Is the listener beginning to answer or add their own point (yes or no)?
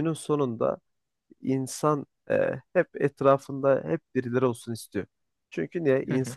no